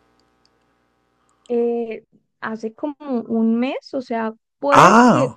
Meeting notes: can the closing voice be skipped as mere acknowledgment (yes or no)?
yes